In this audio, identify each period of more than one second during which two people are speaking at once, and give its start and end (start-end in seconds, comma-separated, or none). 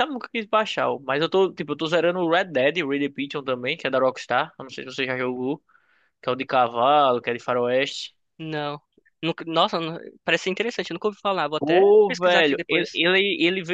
11.6-13.0